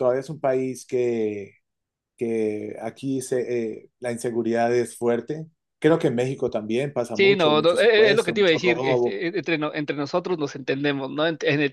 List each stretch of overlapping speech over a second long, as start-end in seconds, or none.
7.1-9.2